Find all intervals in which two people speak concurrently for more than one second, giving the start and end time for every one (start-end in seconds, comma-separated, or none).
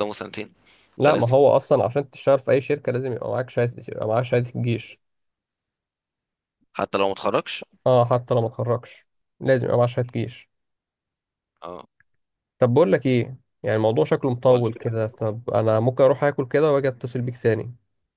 none